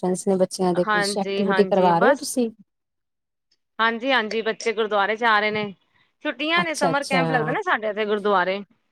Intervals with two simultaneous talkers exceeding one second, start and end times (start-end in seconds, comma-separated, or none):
0.9-2.3